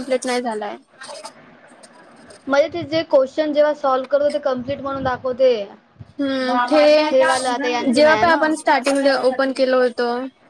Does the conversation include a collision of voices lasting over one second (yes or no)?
yes